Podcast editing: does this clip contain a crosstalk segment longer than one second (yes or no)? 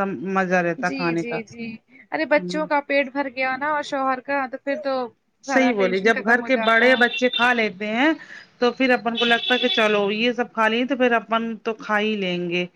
yes